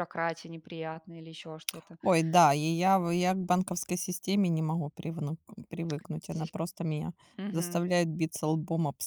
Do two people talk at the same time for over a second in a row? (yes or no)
no